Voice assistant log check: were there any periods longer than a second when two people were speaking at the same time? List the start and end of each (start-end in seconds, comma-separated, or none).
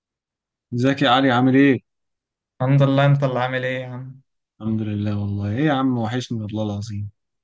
none